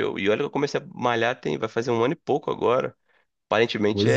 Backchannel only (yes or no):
no